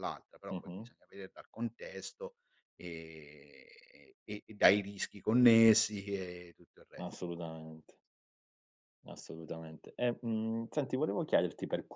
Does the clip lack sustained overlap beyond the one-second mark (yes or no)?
yes